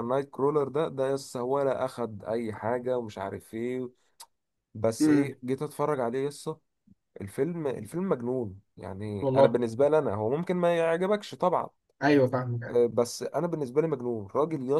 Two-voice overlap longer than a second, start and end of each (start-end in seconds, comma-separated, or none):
none